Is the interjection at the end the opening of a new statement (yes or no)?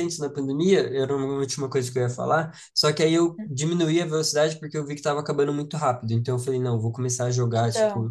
no